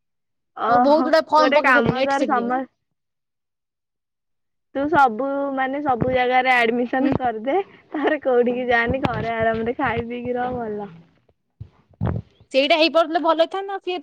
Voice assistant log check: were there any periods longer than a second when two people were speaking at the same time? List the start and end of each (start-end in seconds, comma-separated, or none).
0.7-2.5